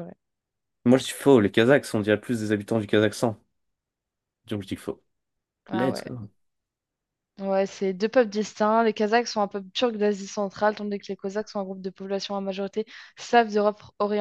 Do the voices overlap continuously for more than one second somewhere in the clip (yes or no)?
no